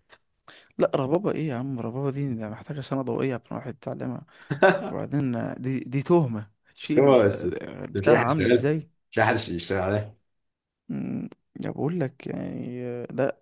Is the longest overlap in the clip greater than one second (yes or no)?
yes